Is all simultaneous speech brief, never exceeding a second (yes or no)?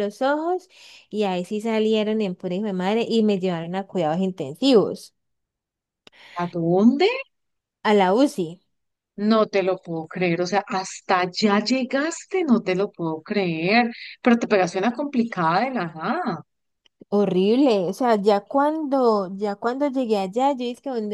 yes